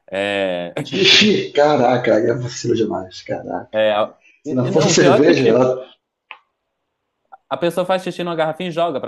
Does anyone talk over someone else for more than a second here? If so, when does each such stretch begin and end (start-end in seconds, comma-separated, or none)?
4.4-5.7